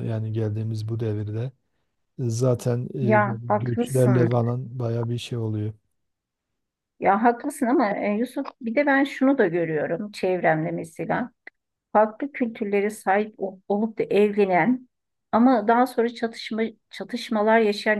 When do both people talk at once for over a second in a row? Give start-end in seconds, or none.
3.0-4.3